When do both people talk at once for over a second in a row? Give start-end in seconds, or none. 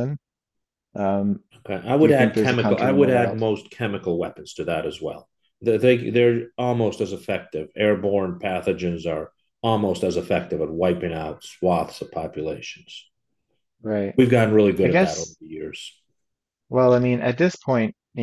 2.0-3.4